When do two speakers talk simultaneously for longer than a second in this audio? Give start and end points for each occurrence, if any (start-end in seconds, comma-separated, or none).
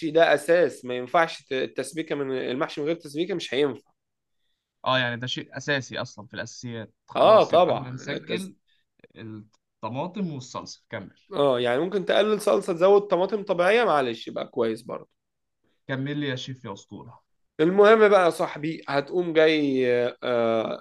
7.2-8.5